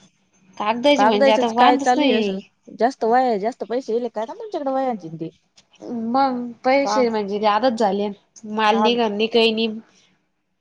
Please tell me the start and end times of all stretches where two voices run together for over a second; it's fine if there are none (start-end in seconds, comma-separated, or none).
1.0-2.4